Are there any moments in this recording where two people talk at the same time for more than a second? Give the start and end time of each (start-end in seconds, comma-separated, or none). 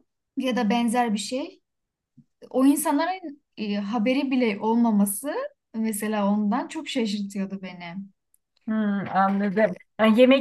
none